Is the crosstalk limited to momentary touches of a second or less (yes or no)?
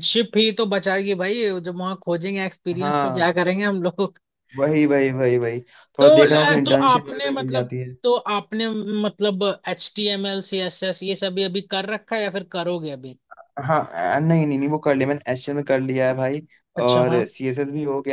no